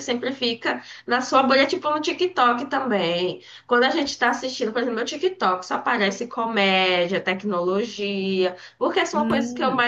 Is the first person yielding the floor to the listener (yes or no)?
no